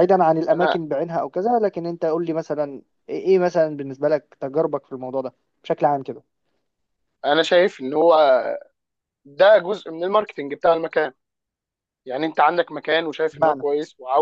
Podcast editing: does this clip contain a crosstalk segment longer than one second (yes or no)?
no